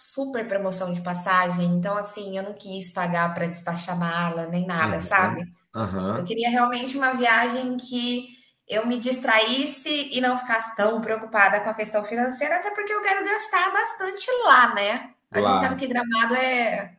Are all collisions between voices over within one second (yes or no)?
yes